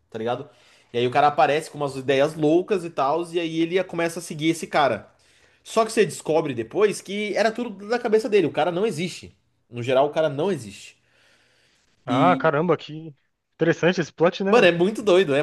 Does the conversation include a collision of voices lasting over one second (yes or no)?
no